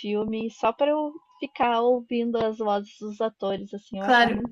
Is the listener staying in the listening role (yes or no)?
no